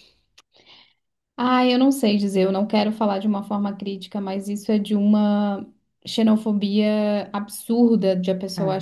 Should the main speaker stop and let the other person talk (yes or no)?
no